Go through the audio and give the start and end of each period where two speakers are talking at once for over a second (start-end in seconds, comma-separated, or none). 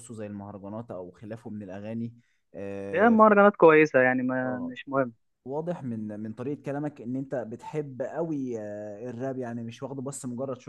none